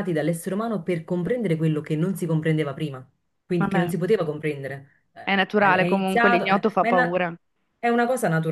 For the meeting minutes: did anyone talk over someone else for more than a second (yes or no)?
yes